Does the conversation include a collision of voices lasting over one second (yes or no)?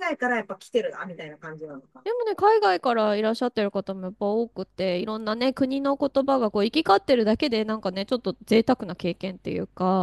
no